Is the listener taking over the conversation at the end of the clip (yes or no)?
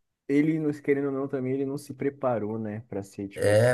yes